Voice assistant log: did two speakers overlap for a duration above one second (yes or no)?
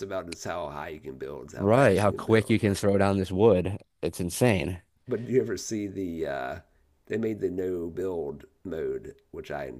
yes